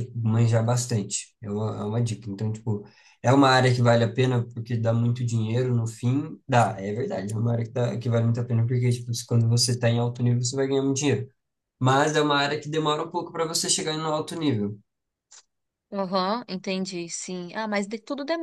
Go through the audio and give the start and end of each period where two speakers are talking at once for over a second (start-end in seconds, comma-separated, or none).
none